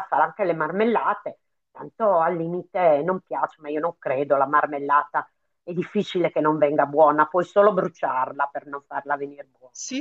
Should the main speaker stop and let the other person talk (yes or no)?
yes